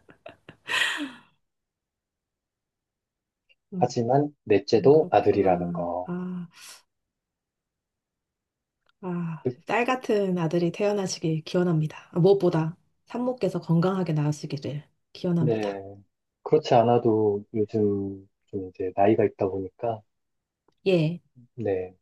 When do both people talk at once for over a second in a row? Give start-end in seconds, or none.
4.9-6.1